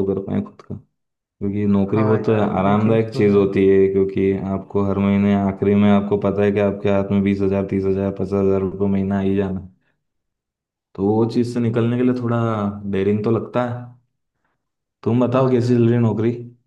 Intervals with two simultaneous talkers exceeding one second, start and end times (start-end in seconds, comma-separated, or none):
1.9-3.5